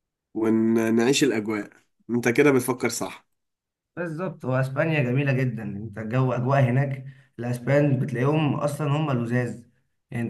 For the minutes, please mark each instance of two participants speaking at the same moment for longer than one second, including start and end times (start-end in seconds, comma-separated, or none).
none